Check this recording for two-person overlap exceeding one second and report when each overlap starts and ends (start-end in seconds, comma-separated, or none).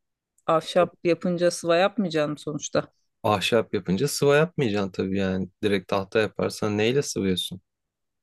none